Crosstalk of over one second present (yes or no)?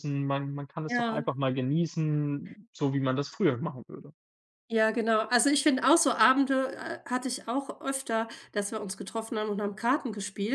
no